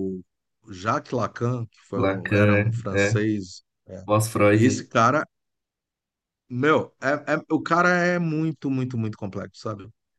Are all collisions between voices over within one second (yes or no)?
no